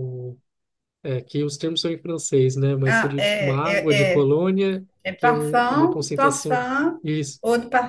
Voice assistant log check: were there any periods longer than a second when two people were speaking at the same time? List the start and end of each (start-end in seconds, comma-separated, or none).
2.9-4.3, 5.0-6.7